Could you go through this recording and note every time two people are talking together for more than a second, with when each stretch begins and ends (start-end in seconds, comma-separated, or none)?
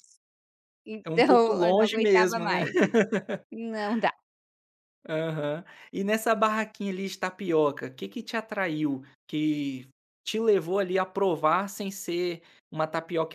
1.1-2.6